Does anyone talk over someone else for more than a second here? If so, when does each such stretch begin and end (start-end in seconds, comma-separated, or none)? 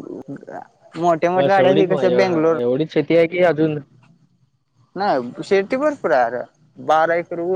1.4-2.6